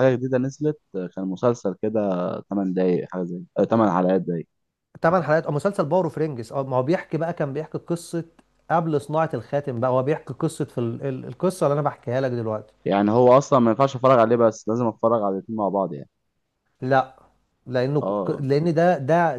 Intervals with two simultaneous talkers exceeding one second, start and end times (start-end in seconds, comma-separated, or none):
none